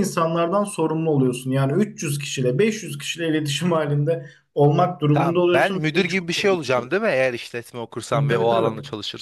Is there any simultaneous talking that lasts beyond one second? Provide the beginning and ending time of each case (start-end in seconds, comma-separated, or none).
5.1-6.9